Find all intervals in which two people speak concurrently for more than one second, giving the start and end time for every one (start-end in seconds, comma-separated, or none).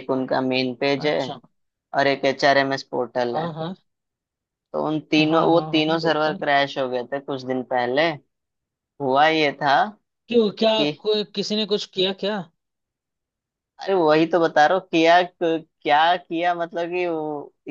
5.2-6.4